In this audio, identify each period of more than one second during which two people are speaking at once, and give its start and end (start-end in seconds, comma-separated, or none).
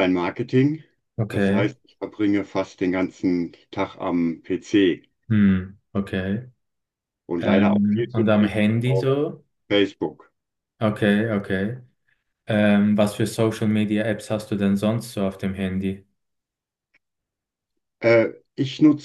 7.4-9.1